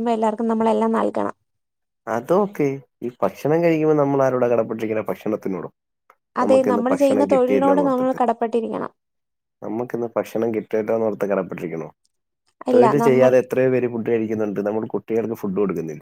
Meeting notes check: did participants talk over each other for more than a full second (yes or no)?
yes